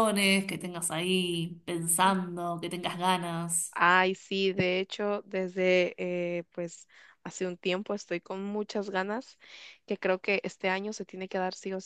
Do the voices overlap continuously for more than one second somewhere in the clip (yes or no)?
no